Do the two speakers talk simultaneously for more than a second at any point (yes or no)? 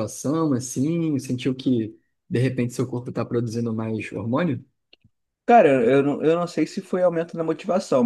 no